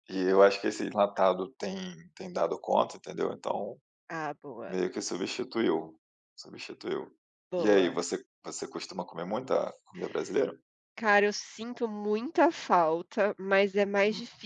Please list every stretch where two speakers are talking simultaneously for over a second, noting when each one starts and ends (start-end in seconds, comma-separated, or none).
none